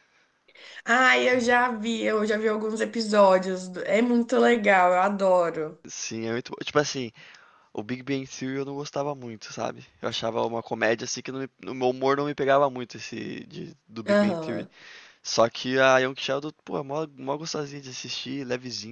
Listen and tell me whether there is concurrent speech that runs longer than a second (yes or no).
no